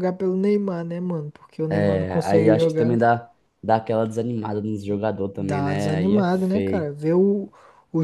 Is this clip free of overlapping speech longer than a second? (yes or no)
no